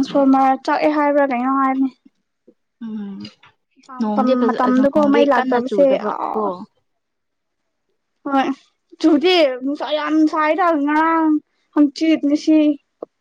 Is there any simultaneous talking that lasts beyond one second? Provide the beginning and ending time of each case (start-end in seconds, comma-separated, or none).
4.0-6.2